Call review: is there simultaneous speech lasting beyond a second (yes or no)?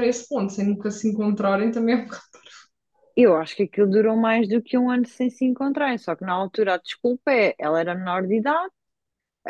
no